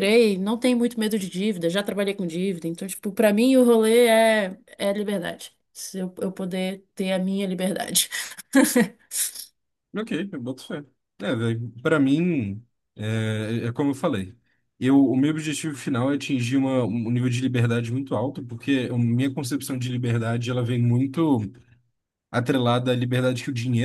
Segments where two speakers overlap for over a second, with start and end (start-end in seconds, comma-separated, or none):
none